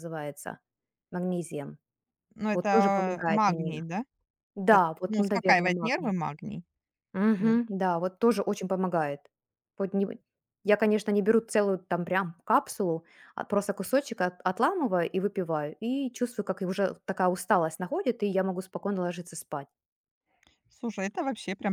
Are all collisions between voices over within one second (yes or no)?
no